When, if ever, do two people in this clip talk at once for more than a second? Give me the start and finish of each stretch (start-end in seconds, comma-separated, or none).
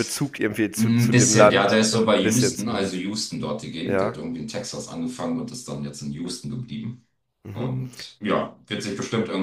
0.7-3.0